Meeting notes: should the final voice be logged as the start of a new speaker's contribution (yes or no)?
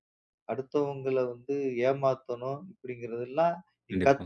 no